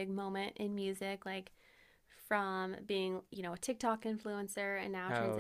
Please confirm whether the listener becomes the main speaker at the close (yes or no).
no